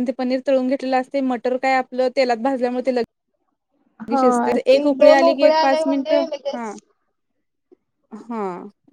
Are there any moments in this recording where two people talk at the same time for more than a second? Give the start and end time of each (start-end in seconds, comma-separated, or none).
4.2-6.7